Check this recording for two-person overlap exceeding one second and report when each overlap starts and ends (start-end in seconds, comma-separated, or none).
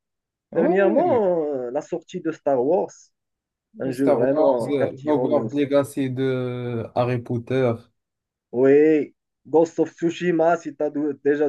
3.8-5.5